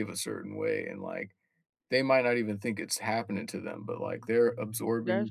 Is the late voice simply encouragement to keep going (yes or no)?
no